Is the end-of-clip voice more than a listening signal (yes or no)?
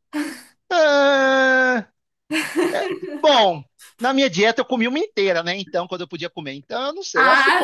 yes